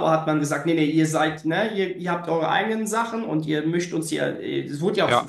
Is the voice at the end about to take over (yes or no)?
yes